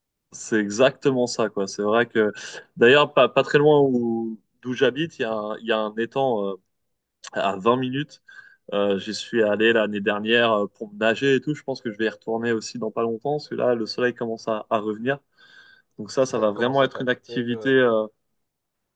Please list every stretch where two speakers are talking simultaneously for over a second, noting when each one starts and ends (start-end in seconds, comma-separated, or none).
16.2-17.7